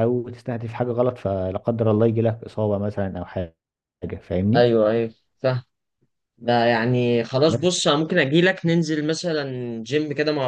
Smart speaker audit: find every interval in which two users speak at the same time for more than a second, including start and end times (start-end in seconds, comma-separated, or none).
none